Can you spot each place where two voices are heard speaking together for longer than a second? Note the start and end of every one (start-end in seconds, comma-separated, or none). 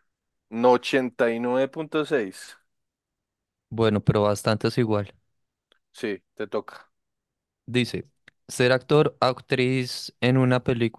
none